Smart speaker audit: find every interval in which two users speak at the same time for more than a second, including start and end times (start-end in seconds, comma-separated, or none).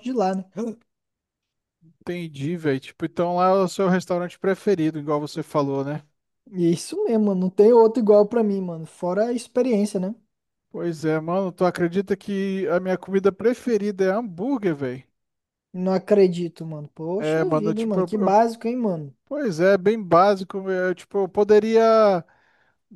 17.2-18.4